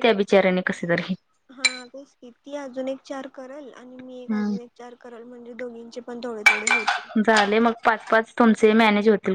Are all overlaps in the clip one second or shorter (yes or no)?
yes